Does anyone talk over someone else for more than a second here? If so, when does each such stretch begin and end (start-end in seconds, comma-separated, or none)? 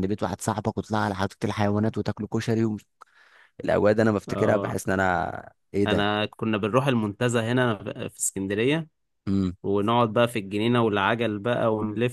none